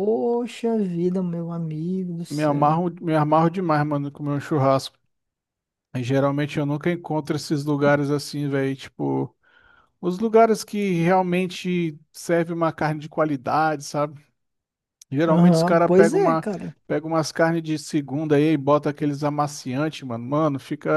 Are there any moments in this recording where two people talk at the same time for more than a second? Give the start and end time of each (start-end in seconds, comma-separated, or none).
15.3-16.5